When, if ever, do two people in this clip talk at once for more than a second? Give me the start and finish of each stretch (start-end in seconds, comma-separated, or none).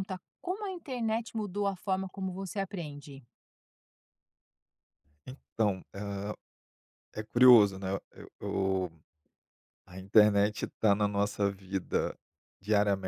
none